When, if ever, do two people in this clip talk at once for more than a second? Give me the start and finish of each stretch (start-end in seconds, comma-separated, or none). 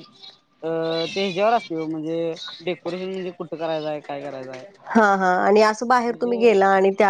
none